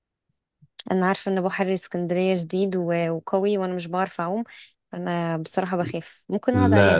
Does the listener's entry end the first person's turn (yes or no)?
yes